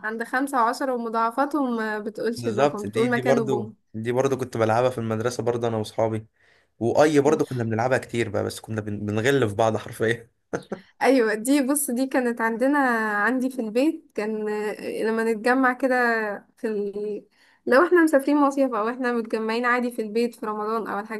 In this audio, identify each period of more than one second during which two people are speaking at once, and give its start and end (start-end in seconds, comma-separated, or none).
2.4-3.8